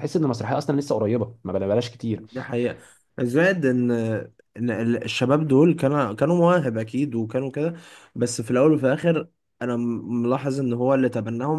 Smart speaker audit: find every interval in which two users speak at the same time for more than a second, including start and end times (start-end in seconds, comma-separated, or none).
none